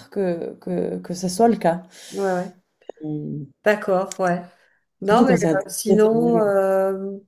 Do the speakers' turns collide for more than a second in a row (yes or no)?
yes